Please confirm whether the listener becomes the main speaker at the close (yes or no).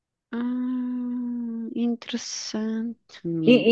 yes